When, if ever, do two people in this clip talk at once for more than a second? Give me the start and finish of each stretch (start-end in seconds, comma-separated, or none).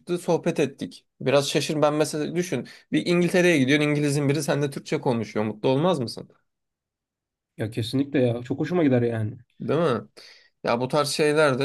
none